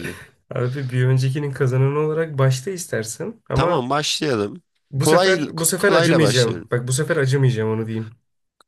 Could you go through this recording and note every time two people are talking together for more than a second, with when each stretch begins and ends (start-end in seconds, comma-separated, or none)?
5.0-6.7